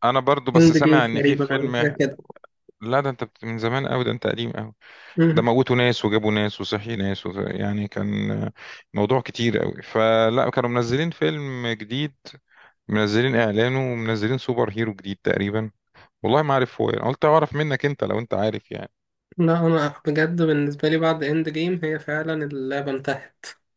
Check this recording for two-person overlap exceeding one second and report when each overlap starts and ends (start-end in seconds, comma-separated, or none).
0.6-1.9